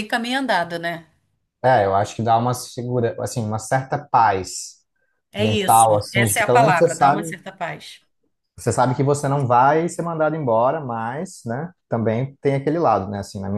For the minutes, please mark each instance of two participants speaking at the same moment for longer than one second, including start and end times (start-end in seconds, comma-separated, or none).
5.4-7.3